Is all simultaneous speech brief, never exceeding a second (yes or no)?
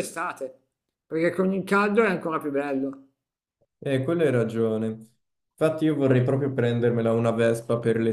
yes